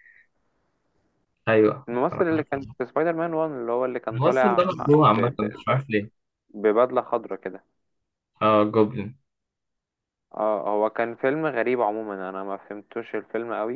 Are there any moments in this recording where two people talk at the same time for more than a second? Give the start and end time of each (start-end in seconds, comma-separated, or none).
4.1-5.6